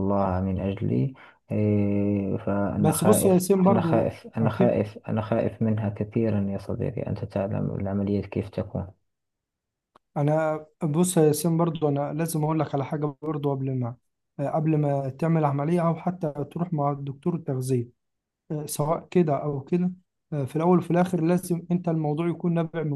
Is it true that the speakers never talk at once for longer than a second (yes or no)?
no